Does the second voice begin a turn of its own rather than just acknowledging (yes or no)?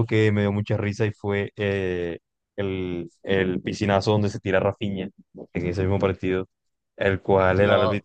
no